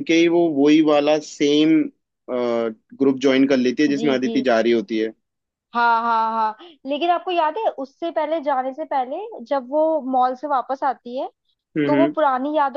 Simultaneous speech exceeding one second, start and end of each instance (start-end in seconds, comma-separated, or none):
none